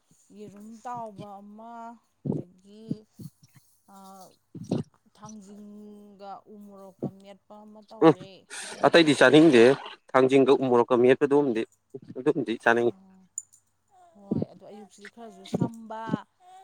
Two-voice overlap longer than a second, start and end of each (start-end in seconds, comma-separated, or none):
none